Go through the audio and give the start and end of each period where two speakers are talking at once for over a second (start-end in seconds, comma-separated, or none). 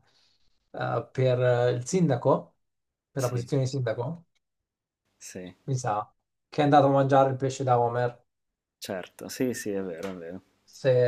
none